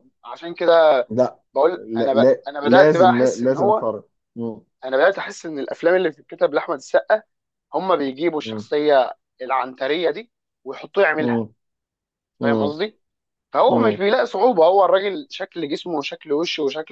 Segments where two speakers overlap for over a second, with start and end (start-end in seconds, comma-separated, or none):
1.8-3.9